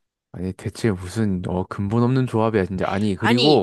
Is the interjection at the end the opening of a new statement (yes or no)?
yes